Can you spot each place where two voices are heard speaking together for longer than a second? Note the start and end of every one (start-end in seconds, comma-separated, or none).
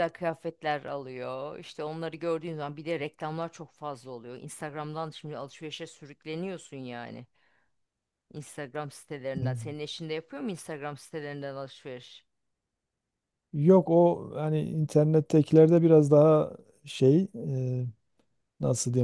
none